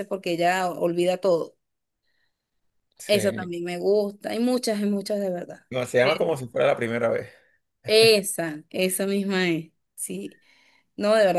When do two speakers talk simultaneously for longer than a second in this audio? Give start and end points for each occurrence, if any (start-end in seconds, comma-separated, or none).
none